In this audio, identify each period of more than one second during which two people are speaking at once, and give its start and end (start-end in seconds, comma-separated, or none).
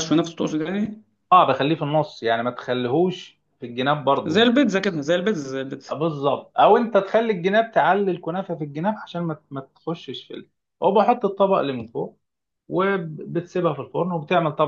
none